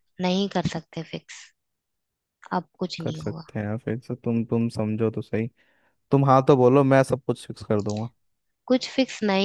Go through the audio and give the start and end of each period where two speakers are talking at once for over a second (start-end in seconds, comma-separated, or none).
none